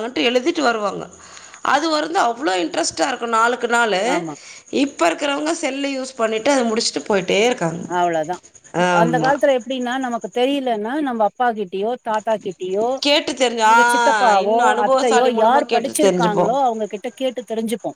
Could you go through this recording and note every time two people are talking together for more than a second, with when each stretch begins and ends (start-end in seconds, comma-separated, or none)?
14.4-16.4